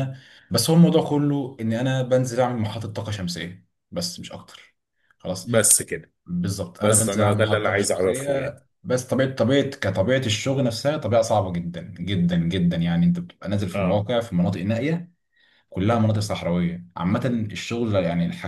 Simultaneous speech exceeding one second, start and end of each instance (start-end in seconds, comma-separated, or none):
6.8-8.6